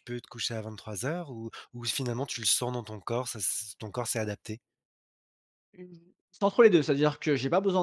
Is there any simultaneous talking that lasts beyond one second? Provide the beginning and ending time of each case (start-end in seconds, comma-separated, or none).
none